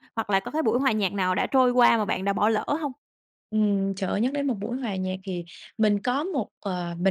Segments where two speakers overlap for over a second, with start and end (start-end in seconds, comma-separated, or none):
none